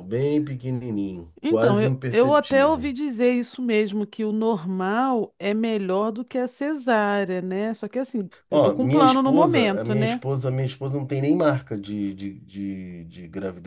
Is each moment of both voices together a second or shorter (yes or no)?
no